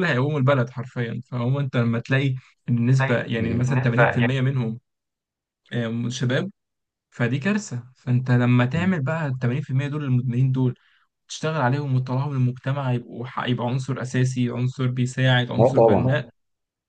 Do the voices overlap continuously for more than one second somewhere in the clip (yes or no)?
yes